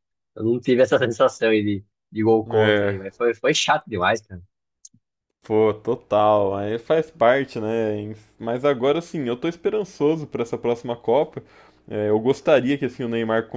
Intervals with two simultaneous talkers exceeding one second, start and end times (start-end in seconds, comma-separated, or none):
none